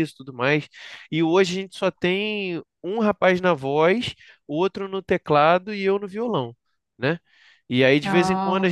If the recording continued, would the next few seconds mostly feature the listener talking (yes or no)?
no